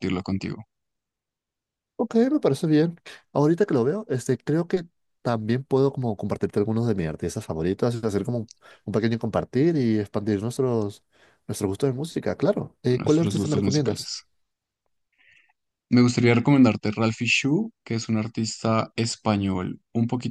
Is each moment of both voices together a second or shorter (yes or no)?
no